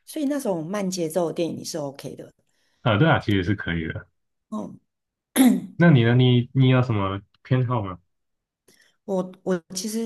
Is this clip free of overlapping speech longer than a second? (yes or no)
yes